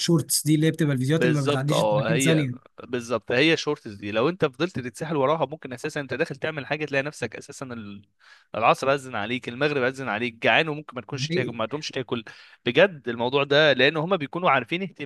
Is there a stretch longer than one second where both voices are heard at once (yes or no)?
yes